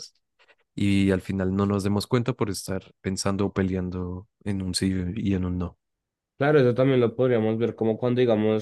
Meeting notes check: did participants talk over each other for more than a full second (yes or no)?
no